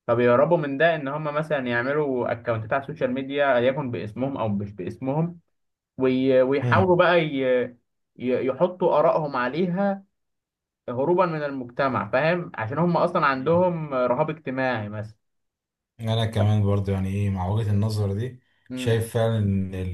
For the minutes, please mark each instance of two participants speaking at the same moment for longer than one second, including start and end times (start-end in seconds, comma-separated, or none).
none